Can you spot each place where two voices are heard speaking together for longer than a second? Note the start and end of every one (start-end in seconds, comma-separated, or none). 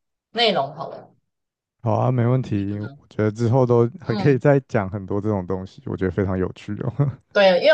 none